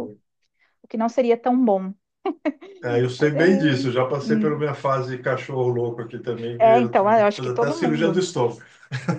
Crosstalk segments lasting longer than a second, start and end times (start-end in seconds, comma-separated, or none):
6.6-8.2